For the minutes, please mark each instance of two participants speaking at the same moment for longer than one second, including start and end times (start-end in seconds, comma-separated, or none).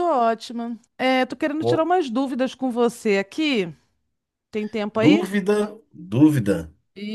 none